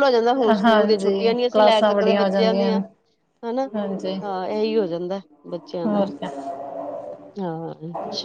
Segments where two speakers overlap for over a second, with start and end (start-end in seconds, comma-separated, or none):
0.6-2.8